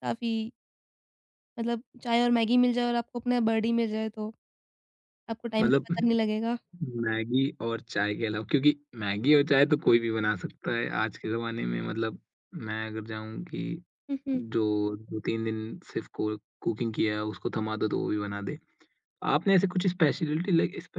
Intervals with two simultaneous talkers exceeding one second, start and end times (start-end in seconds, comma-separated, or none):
none